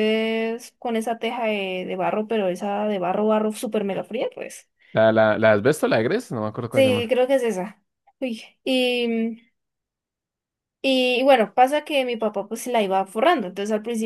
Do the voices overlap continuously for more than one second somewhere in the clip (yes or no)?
no